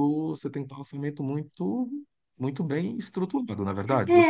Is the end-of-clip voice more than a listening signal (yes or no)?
yes